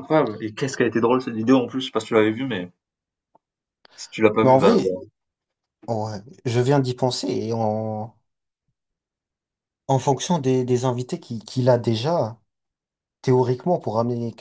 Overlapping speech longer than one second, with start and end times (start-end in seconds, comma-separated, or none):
none